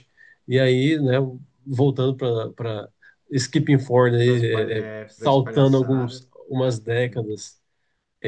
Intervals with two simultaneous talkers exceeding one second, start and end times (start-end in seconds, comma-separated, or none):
4.2-6.2